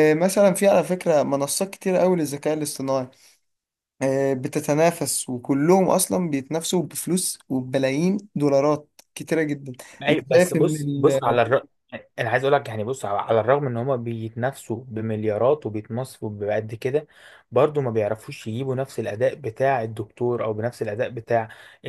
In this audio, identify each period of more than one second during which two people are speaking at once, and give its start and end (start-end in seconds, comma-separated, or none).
10.1-11.3